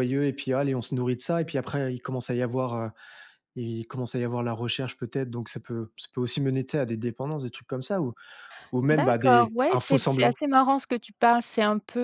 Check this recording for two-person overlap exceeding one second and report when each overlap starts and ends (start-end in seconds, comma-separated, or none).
8.9-10.4